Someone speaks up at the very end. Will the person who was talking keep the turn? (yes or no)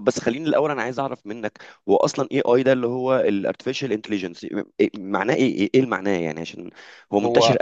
yes